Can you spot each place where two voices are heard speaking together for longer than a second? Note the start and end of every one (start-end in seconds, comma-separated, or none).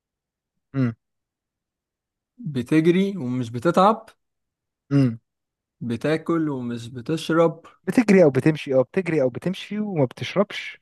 none